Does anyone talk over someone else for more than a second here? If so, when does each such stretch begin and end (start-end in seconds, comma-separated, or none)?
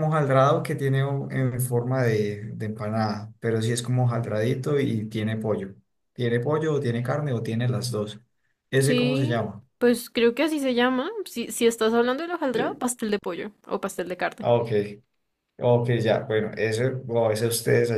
none